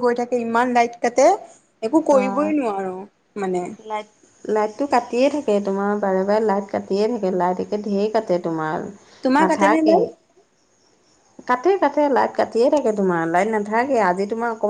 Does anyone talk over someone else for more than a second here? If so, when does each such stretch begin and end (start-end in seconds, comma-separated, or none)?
none